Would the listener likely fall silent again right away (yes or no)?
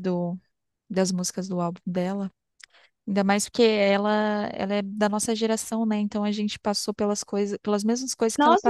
no